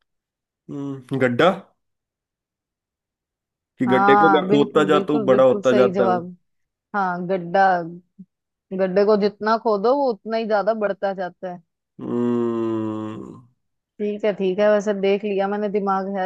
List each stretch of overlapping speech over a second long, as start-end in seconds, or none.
3.9-6.3